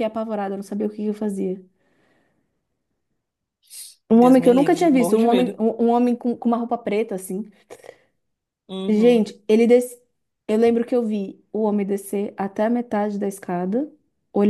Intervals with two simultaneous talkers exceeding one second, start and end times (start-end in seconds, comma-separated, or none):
4.1-5.6